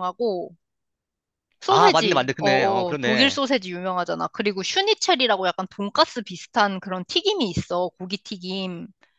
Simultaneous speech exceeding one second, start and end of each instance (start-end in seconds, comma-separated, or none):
1.7-3.4